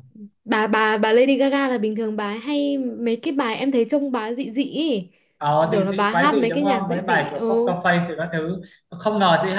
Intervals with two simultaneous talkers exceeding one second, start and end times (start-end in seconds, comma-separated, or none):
5.6-7.7